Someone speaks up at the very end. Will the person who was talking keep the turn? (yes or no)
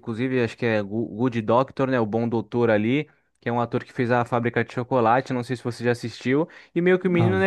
yes